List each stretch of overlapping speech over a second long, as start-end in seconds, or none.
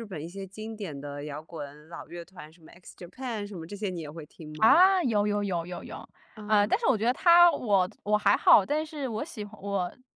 none